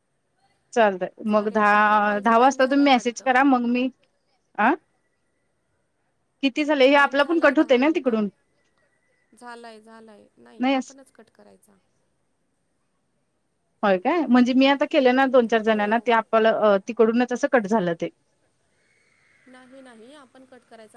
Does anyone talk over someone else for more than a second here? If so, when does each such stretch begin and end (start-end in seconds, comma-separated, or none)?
1.3-3.3